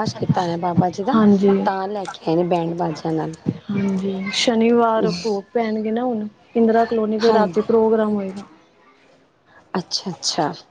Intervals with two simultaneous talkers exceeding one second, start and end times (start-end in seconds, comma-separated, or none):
none